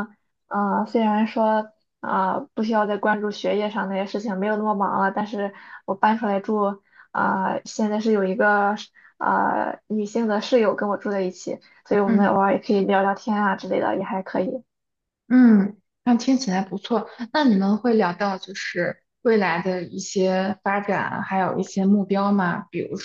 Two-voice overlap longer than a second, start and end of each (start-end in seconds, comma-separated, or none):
none